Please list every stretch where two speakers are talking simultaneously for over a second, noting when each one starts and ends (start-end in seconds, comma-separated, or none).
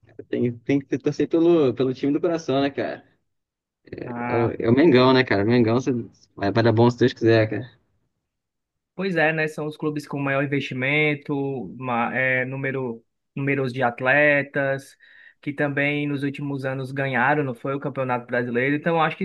none